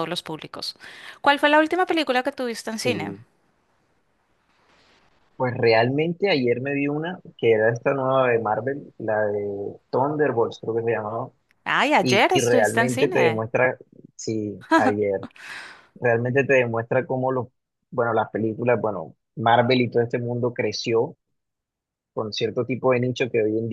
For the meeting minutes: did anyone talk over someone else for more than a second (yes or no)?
yes